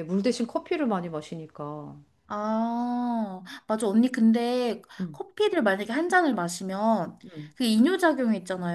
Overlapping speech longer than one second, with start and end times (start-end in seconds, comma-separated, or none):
none